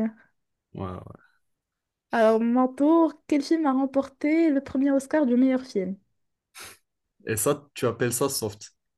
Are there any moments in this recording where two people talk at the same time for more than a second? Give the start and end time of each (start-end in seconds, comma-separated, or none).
none